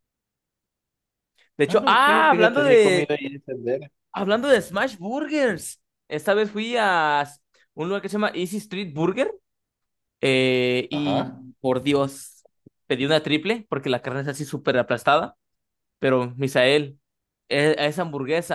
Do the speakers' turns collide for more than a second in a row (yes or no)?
yes